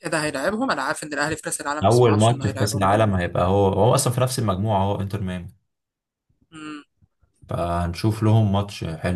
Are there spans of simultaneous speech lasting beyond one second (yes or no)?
yes